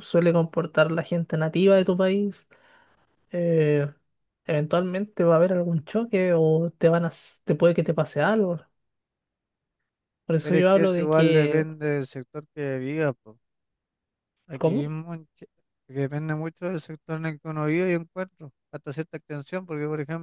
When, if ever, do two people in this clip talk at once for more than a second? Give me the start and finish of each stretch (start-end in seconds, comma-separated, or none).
10.4-11.7